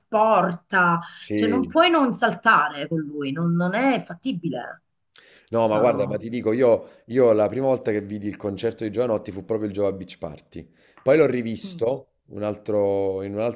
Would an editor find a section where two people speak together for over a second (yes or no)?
no